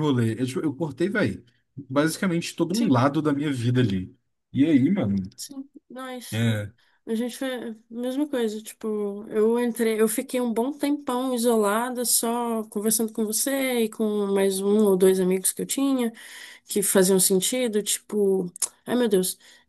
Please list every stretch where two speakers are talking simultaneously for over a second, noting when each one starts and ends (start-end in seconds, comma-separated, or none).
none